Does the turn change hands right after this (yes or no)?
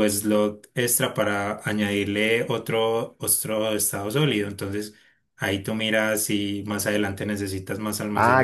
yes